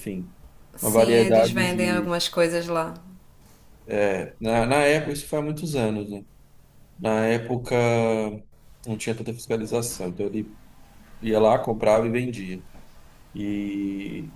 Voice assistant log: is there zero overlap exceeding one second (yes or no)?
no